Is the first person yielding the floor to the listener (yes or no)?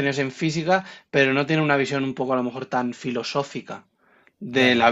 no